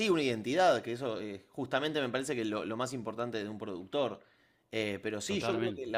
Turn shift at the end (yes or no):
no